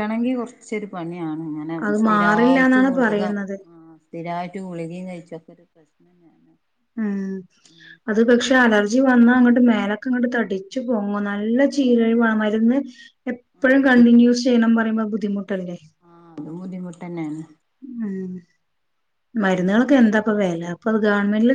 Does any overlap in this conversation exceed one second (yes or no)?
yes